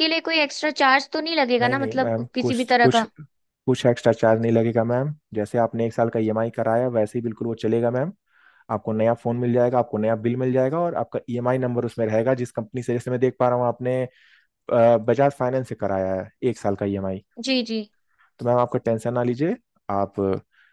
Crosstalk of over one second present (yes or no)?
yes